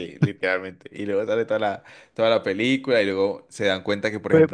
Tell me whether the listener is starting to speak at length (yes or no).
no